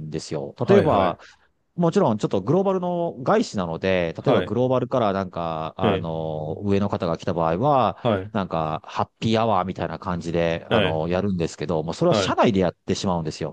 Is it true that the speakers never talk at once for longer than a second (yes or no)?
yes